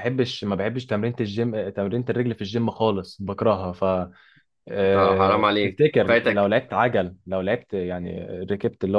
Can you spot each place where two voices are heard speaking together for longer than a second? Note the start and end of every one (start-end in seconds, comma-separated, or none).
4.8-6.5